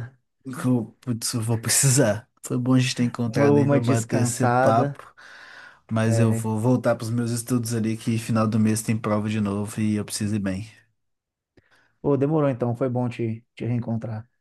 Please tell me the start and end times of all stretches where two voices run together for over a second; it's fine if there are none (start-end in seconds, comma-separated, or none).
3.3-5.0